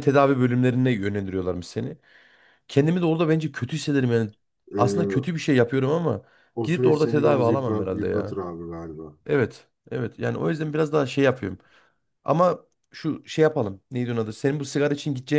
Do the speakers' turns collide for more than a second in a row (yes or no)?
yes